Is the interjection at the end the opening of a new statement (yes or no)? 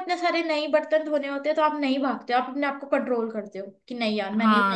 yes